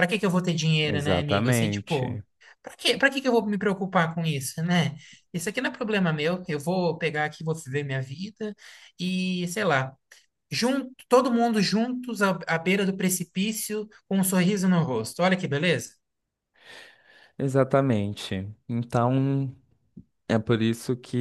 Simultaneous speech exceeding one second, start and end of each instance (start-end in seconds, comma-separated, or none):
0.8-2.2